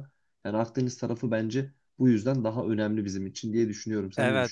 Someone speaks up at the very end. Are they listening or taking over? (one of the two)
taking over